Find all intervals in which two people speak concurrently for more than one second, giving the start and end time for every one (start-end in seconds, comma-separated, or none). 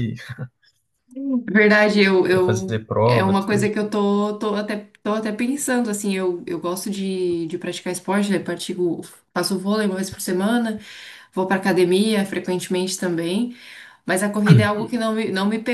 2.3-3.7